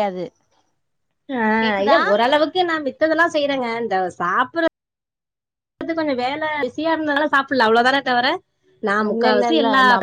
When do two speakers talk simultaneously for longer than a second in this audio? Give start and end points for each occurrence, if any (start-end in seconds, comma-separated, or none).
none